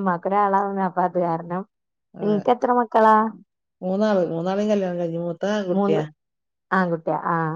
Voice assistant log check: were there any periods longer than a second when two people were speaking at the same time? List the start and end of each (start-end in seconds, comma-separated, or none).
none